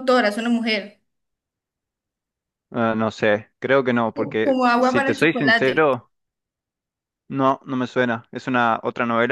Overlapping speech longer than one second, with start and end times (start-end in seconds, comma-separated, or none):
4.4-5.9